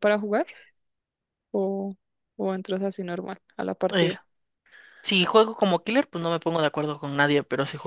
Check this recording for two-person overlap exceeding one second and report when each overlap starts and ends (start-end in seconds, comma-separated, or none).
none